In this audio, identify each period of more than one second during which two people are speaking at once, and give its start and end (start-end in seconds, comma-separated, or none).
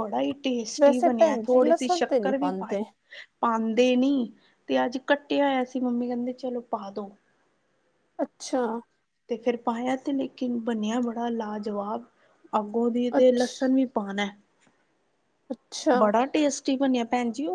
0.8-2.8